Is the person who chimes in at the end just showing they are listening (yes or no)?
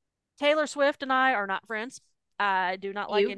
yes